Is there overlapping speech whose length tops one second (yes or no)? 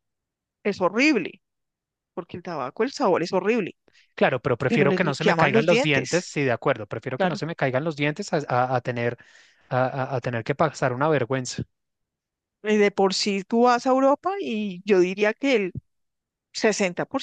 yes